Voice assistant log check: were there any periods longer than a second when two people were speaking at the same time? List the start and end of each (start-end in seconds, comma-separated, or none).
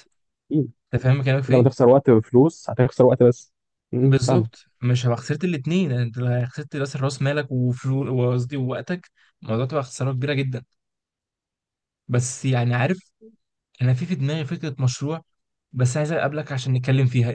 none